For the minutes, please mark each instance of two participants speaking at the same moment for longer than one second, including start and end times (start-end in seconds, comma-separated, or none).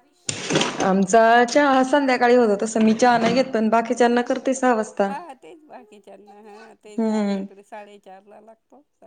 none